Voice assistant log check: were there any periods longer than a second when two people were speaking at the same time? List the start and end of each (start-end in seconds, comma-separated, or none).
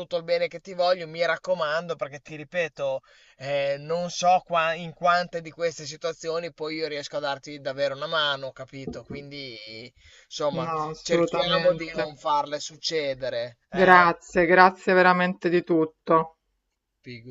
10.6-12.1